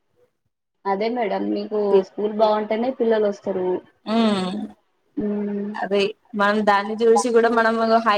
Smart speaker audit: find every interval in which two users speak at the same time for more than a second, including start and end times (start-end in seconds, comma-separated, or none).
none